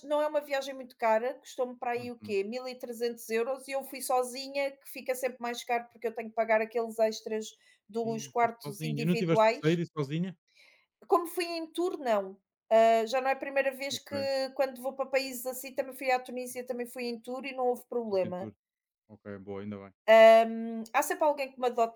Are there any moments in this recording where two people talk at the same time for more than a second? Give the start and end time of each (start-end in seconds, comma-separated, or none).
8.0-9.6